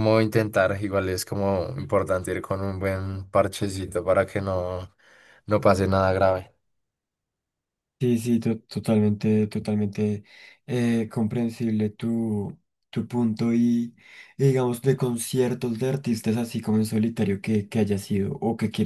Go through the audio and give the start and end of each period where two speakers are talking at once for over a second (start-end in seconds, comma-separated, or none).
none